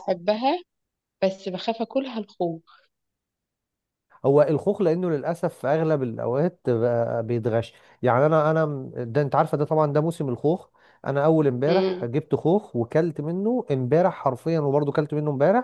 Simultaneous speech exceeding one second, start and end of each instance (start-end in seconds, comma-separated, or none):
none